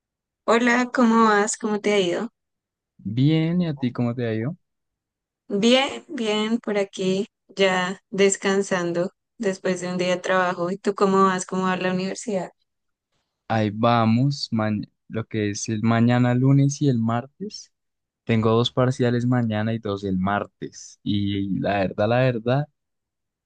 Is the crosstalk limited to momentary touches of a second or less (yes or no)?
yes